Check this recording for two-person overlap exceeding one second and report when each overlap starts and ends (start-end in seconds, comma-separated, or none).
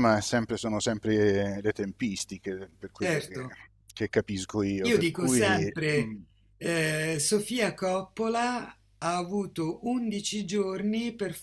4.8-6.2